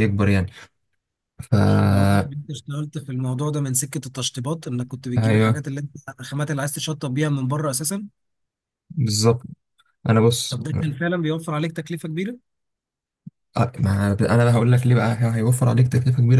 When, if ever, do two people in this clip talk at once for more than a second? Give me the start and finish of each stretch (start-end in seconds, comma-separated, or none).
none